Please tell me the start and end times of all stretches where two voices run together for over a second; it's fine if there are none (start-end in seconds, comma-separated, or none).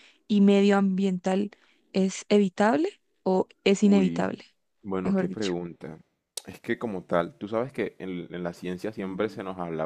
none